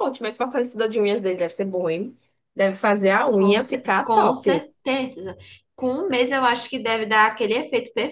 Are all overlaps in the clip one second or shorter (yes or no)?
no